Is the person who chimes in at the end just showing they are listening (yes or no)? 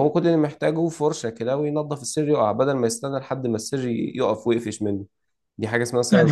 no